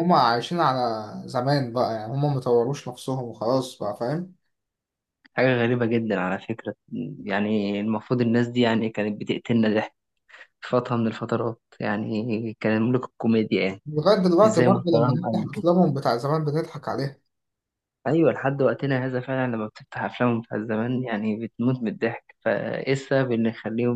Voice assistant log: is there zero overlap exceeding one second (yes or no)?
no